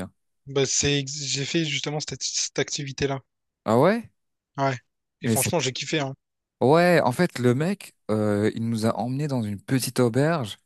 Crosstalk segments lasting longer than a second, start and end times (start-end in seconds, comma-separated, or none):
none